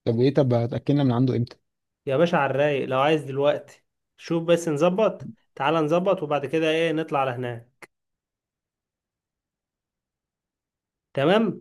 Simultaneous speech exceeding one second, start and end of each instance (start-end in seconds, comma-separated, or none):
none